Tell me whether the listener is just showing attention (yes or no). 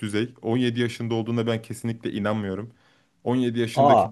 yes